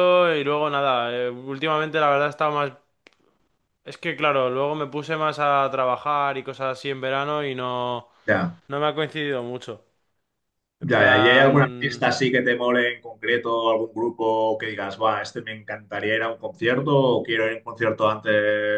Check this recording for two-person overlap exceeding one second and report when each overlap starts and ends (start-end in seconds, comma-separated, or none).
10.8-12.1